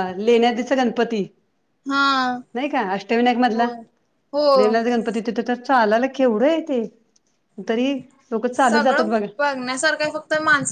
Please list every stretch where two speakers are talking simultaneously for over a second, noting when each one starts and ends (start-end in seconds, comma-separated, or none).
none